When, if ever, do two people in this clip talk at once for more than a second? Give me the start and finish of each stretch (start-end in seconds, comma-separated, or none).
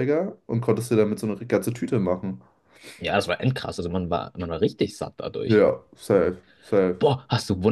none